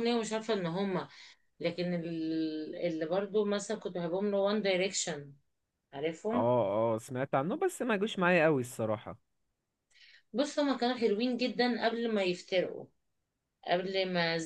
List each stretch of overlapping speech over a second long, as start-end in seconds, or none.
none